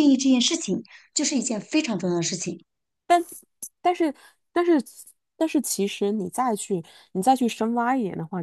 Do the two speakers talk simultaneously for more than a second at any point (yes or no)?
no